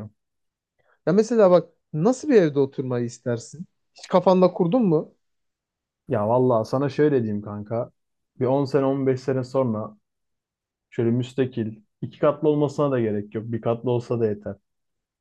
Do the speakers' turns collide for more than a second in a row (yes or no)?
no